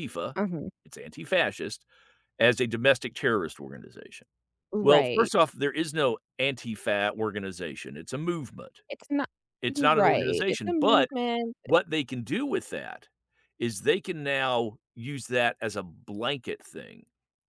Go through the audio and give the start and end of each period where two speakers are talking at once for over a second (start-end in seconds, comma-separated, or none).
9.7-11.1